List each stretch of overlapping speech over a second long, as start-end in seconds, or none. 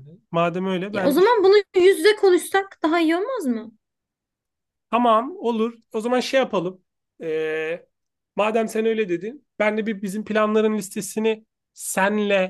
none